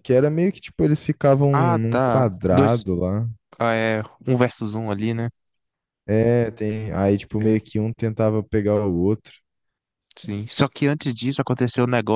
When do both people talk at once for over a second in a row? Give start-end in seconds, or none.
1.5-2.9